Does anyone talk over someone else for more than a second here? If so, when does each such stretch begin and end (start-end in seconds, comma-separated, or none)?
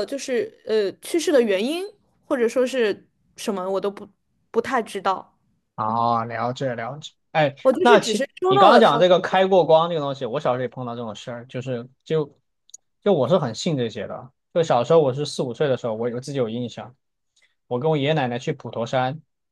7.6-9.0